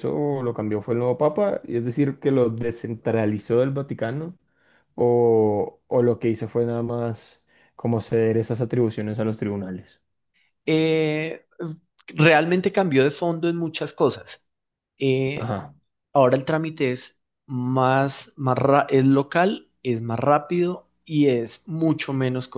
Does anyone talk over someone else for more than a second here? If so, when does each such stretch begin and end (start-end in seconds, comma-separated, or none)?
none